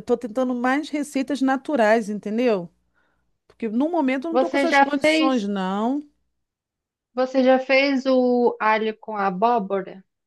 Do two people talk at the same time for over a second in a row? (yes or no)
yes